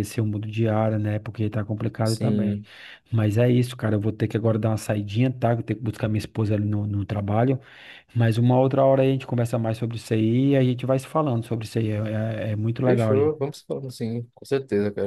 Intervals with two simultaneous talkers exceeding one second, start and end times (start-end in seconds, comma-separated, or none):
none